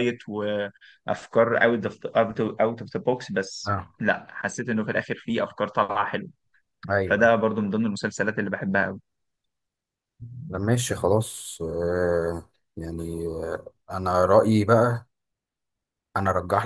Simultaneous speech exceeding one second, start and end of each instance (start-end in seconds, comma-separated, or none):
none